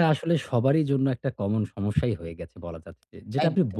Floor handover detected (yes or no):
no